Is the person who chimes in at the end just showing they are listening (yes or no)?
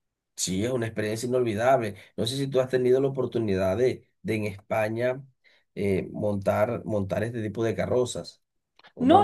no